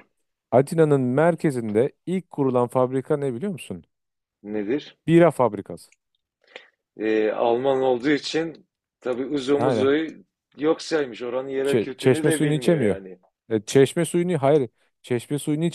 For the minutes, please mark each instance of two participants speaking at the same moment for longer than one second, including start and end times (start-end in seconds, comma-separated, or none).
11.7-13.0